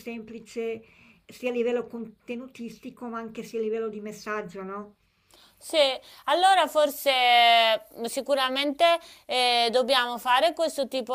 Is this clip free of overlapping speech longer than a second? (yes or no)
yes